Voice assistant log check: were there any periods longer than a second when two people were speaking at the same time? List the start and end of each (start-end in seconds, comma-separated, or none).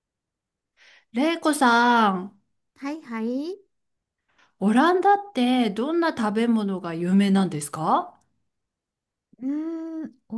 none